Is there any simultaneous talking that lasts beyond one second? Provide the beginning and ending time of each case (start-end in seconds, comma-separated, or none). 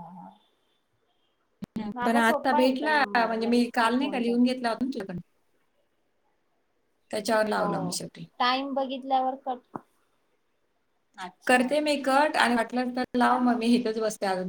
2.1-4.4